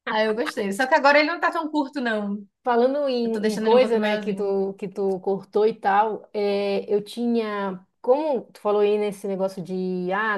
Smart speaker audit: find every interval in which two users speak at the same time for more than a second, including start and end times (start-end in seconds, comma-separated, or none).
3.2-4.6